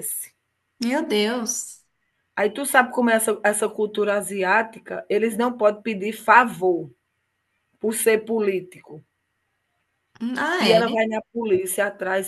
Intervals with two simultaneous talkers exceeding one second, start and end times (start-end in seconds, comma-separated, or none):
none